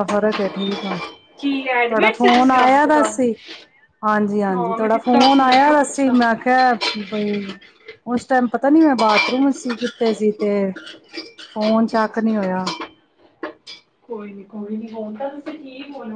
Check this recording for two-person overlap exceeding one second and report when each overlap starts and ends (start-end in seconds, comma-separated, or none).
1.4-3.1, 4.5-6.2